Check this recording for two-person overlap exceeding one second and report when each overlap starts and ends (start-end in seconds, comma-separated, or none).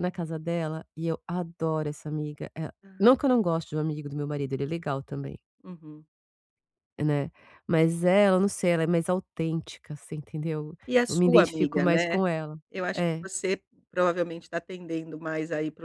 10.9-12.2